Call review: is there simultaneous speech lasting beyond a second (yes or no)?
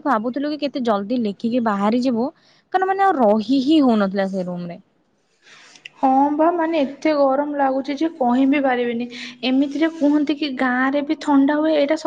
no